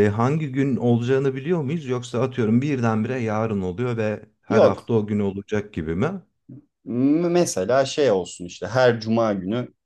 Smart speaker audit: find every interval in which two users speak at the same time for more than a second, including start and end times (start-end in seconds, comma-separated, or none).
none